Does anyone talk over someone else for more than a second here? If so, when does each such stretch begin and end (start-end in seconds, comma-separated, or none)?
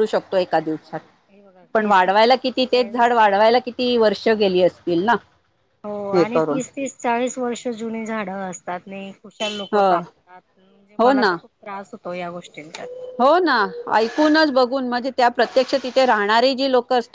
1.7-3.2